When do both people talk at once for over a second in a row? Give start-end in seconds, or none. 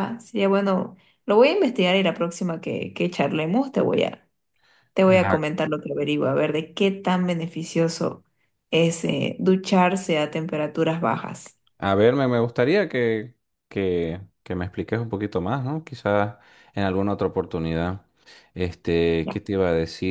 none